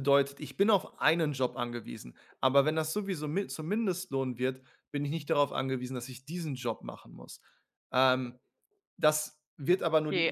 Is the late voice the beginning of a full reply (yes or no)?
yes